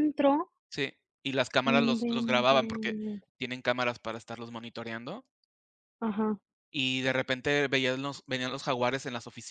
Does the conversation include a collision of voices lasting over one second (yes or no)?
yes